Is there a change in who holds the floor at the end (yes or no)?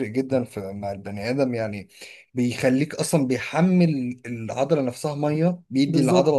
yes